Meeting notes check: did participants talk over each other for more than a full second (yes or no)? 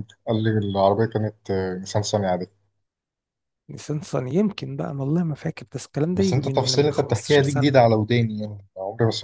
yes